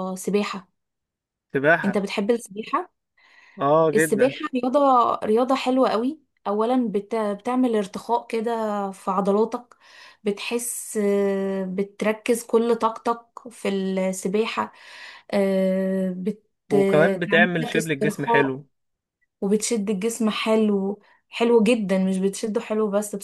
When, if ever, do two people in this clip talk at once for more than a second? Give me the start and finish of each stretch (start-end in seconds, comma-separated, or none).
16.7-18.6